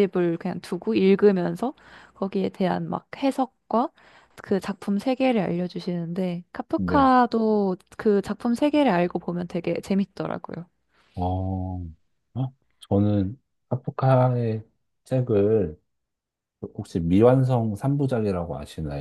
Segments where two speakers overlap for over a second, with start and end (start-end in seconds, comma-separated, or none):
none